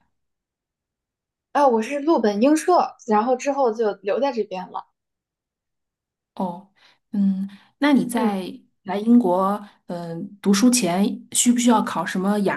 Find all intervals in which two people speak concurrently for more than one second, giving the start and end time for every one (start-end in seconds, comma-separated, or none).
none